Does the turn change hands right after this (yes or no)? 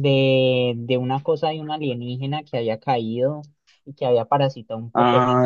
yes